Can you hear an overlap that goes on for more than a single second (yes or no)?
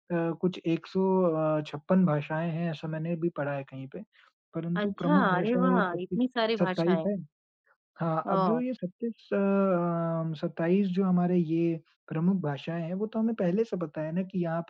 yes